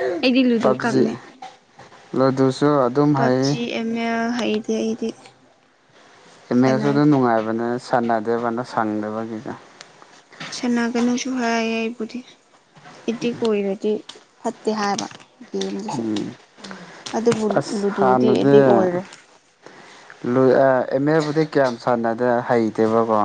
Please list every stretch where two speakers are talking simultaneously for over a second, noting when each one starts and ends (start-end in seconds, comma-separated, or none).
none